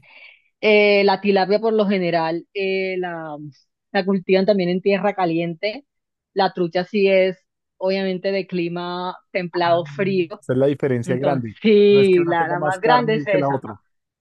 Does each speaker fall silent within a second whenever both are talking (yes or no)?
no